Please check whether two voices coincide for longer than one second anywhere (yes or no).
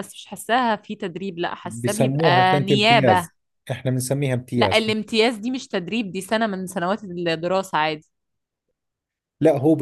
yes